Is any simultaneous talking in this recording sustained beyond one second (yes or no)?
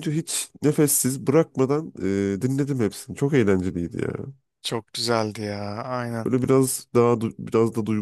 no